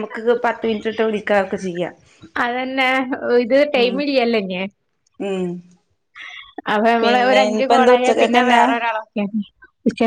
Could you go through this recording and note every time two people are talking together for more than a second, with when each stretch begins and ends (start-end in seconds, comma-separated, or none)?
7.0-8.6